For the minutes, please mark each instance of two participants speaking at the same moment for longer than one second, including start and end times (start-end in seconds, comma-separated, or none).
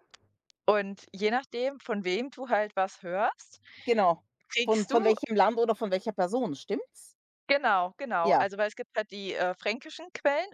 none